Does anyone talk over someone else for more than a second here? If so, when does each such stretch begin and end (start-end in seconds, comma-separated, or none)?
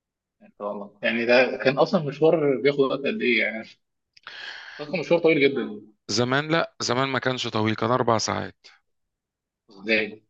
none